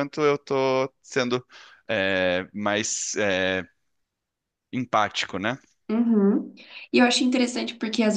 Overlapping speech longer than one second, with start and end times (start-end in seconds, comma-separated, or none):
none